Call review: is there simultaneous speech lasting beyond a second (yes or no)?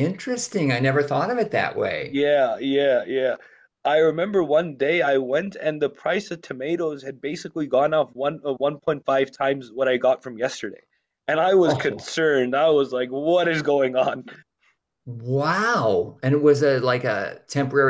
no